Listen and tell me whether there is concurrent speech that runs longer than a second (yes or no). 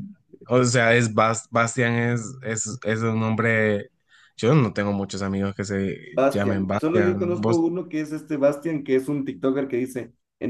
yes